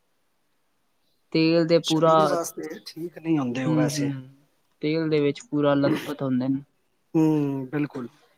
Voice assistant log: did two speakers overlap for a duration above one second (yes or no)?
yes